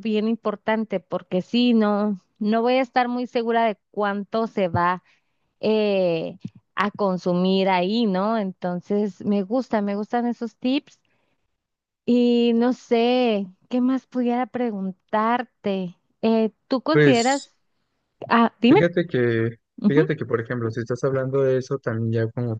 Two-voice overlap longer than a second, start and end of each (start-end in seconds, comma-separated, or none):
none